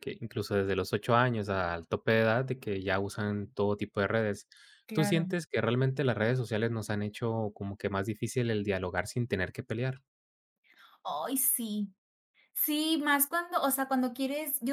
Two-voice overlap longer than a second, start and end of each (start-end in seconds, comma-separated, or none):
none